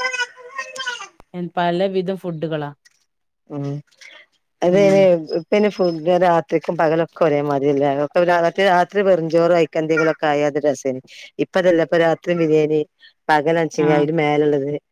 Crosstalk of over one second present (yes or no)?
no